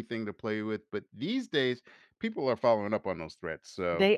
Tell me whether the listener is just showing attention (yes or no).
yes